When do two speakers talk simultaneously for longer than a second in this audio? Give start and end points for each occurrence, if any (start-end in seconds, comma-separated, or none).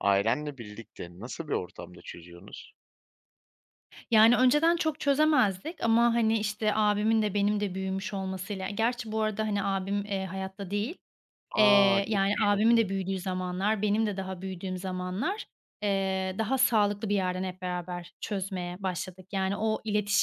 11.6-12.9